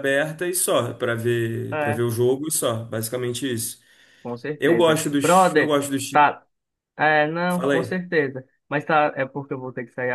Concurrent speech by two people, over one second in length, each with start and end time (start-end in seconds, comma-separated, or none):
4.6-6.2